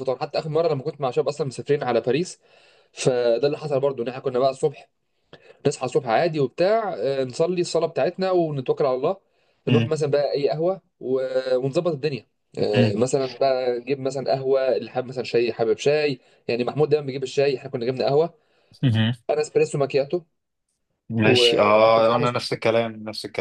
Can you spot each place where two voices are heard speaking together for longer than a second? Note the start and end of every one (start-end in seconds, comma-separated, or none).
21.2-22.6